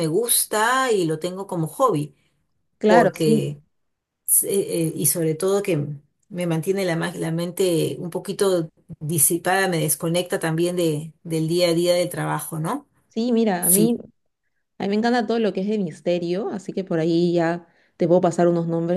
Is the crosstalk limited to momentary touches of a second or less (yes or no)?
yes